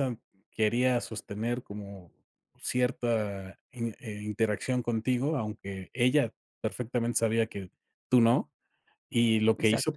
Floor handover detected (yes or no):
no